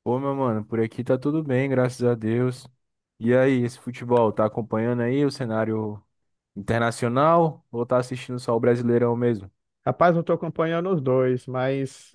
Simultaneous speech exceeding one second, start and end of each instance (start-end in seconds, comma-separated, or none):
none